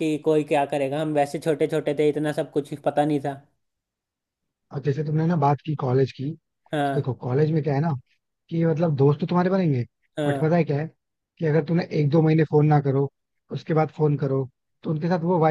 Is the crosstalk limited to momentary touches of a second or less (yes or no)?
yes